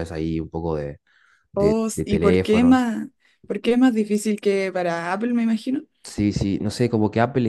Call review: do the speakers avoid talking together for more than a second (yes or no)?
no